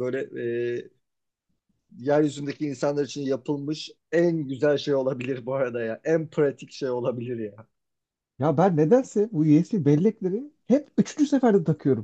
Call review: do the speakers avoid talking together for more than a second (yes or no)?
yes